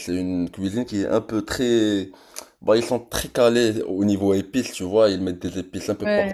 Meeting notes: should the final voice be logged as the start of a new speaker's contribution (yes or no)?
no